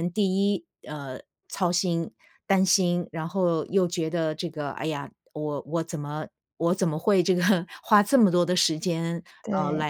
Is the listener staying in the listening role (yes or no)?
yes